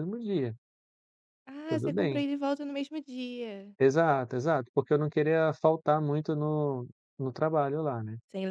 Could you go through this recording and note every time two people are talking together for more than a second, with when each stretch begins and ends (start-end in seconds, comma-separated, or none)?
none